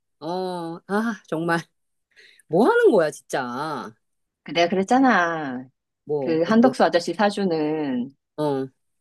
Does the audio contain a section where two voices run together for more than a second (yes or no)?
no